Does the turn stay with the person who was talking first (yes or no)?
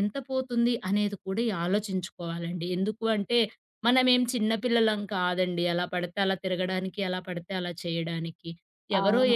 yes